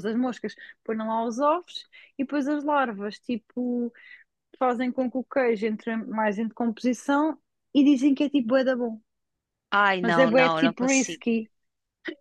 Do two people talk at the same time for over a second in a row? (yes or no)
yes